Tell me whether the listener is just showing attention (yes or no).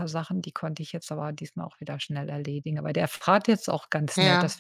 yes